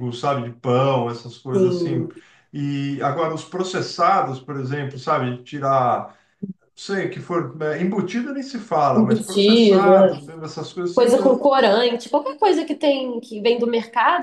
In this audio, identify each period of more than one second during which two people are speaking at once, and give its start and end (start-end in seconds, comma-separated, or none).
8.9-10.2